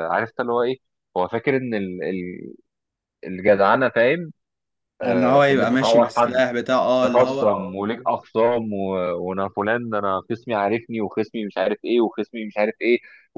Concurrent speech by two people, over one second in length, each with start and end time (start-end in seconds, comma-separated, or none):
5.0-6.3